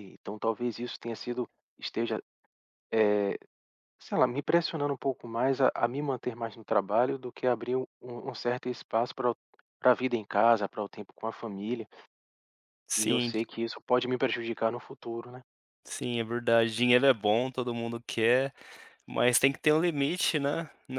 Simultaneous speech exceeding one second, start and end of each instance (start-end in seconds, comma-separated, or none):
none